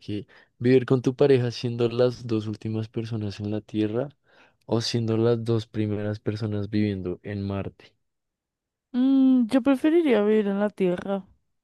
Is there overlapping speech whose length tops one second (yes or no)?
no